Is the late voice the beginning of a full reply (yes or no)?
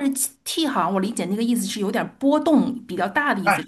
yes